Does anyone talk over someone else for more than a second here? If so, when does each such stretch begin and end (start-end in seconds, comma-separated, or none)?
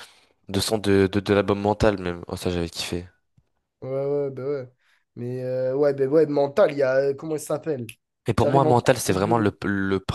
8.4-9.6